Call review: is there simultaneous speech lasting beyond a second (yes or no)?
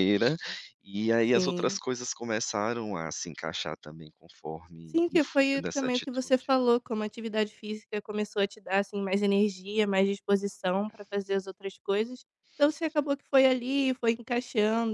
yes